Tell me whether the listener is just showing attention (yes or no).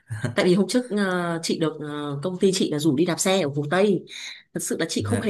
yes